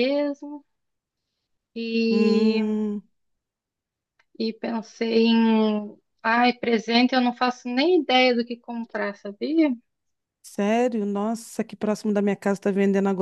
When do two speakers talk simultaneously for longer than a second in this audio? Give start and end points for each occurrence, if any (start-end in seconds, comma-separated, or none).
none